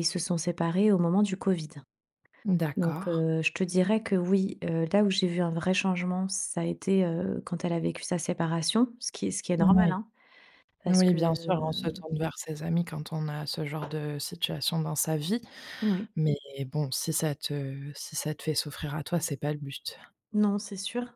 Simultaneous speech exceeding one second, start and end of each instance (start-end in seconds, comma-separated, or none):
none